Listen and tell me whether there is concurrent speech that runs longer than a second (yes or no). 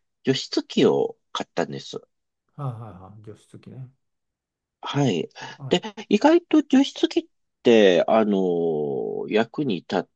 no